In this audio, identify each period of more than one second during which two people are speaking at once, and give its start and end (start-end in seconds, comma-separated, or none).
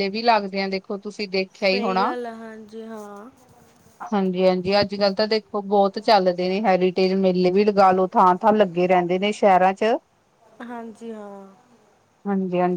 none